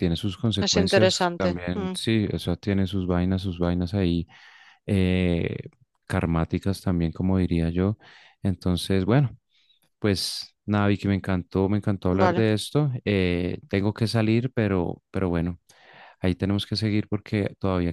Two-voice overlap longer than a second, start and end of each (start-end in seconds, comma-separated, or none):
0.6-1.9